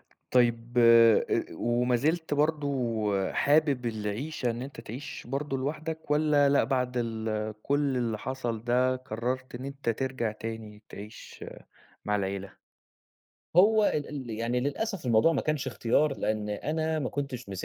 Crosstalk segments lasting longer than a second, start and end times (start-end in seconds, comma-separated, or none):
none